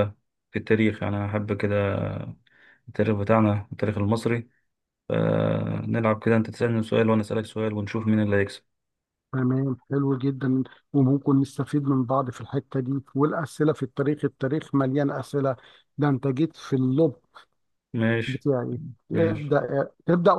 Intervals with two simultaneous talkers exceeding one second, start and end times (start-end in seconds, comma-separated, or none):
none